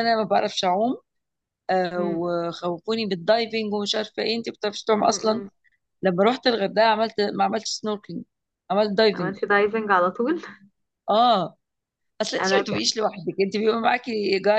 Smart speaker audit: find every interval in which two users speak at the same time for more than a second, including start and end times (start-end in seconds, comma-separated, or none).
none